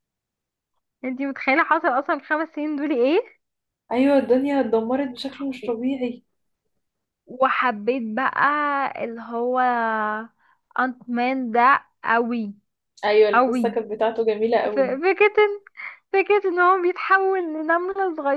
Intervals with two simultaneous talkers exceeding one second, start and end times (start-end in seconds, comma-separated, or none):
none